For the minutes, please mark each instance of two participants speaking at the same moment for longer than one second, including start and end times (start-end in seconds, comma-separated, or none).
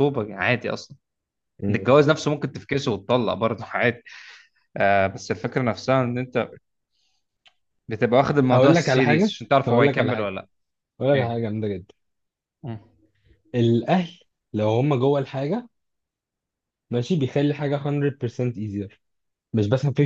8.5-10.3